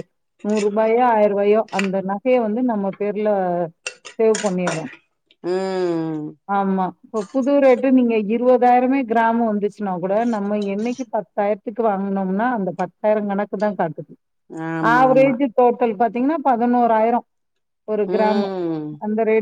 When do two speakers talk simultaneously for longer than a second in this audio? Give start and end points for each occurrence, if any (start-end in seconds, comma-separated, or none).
none